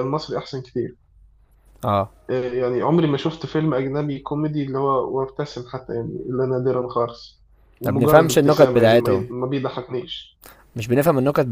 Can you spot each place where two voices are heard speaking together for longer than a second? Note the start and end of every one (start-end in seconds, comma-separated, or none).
7.8-9.3